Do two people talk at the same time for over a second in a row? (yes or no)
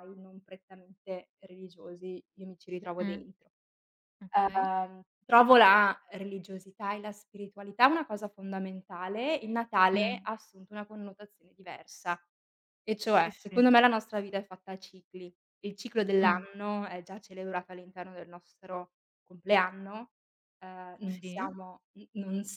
no